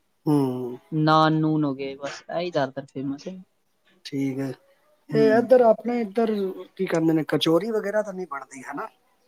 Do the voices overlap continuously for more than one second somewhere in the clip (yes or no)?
no